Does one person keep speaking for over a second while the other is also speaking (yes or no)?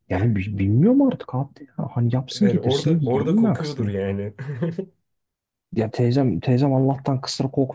yes